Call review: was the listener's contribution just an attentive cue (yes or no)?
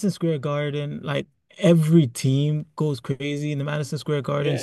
no